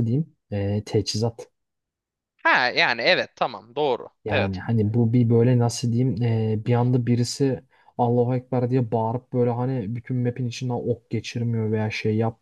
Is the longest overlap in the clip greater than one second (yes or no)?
no